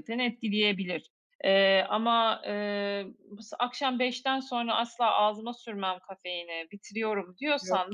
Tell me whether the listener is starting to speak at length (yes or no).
no